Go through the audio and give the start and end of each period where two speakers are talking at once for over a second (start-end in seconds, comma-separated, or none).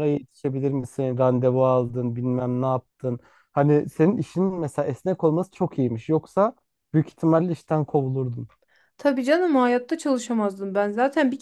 none